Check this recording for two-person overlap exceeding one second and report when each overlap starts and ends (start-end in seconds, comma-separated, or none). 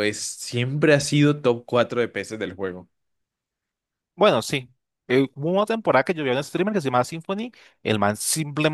none